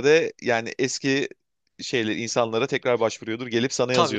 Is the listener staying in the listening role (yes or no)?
no